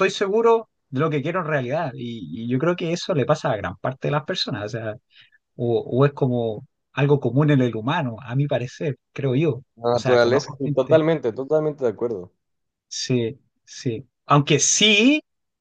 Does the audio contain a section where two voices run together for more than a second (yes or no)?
yes